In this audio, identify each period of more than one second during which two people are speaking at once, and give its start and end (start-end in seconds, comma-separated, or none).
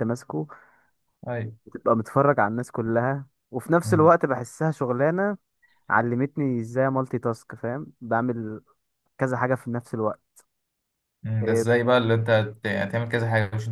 none